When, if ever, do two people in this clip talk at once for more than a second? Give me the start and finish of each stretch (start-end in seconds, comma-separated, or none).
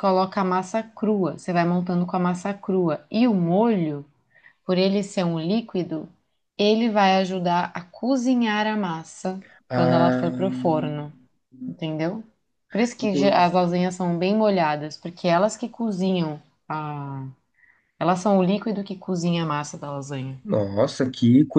9.7-11.0